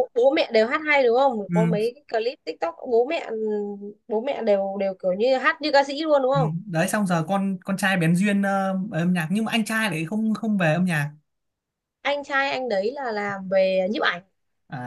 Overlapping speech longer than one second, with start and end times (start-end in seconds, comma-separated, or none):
none